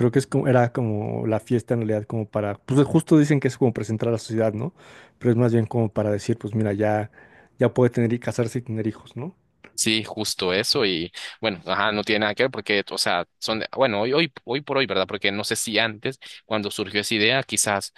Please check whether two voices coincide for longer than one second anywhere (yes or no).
no